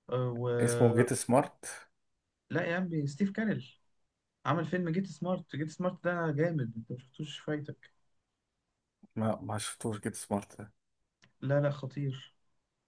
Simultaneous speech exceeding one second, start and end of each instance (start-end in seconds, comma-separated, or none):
none